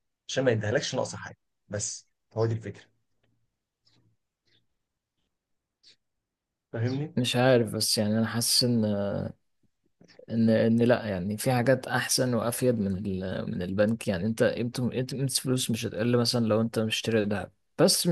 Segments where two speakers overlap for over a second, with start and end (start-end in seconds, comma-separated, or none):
none